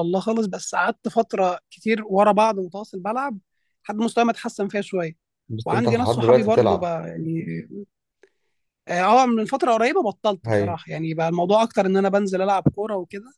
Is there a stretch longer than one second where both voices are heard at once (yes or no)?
yes